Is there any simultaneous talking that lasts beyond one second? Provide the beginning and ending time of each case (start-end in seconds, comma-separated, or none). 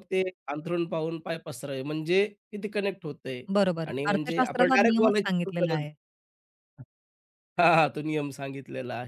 3.9-5.8